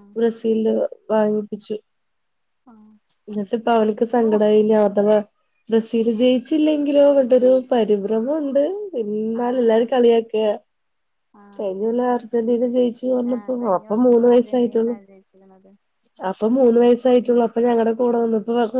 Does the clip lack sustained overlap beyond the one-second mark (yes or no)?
no